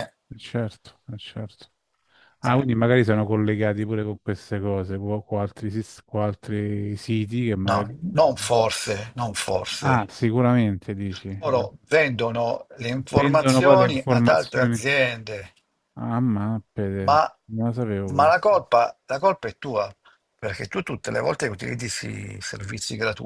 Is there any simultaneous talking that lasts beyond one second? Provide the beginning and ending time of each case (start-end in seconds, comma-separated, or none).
13.1-14.8